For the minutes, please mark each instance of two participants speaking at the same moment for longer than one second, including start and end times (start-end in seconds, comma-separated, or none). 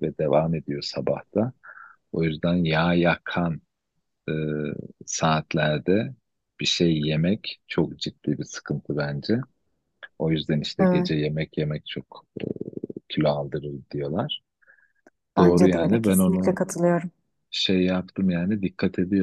15.4-16.6